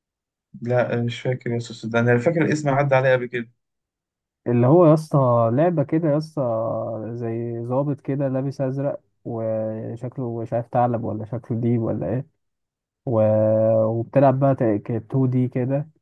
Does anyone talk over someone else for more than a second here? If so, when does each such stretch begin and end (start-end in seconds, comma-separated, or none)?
none